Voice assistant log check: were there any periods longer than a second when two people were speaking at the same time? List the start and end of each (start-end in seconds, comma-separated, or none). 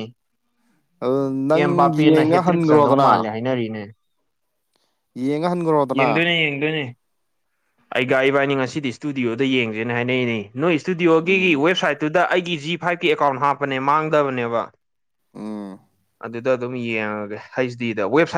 1.5-3.1